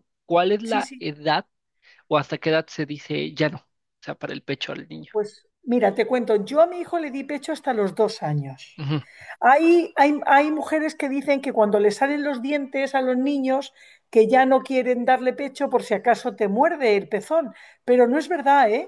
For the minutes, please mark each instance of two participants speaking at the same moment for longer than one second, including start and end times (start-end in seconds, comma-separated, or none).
none